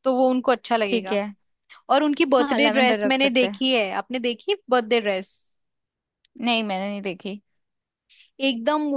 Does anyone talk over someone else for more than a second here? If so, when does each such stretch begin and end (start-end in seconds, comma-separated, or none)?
2.4-3.6